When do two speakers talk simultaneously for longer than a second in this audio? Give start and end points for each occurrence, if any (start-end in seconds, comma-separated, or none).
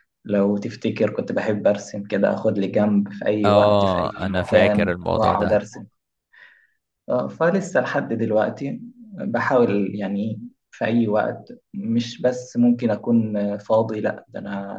3.4-5.6